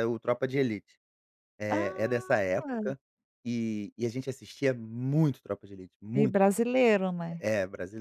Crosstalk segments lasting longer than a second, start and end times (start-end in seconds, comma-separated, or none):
1.7-2.9